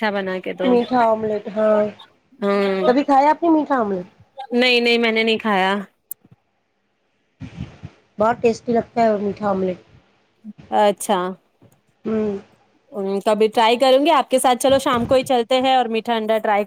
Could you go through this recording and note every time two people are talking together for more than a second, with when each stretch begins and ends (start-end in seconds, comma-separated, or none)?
none